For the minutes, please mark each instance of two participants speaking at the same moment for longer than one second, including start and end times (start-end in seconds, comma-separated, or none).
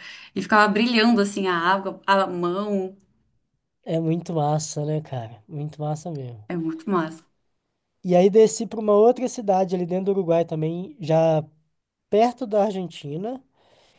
none